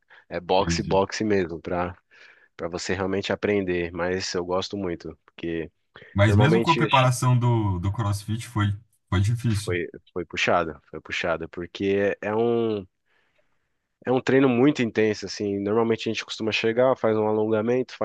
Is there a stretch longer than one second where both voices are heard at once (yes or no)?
no